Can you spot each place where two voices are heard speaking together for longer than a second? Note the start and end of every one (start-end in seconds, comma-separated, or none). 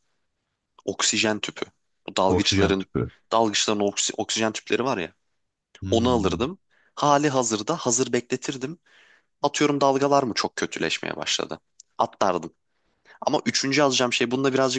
none